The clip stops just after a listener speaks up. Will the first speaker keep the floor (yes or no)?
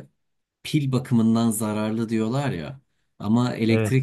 yes